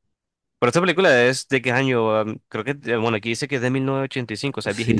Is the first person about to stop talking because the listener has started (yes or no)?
yes